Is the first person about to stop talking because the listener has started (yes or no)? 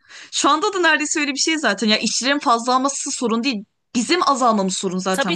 yes